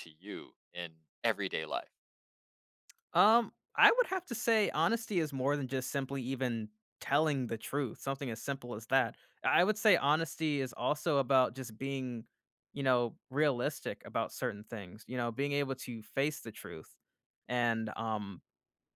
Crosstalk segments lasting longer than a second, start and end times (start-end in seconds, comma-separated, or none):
none